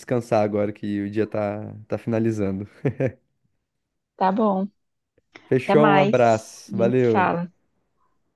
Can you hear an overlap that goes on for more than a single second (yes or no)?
yes